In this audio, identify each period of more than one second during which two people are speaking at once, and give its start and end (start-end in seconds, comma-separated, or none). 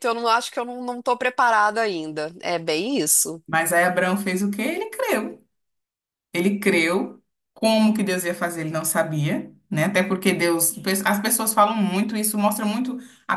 none